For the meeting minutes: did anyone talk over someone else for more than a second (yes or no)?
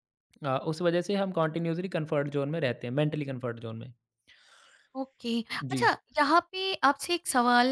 no